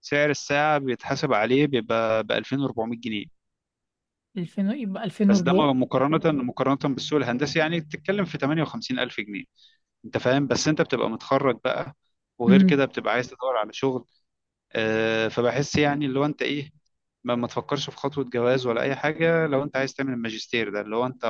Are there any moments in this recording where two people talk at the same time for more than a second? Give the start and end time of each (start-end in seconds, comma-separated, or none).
none